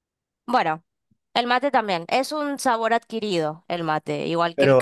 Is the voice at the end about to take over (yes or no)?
yes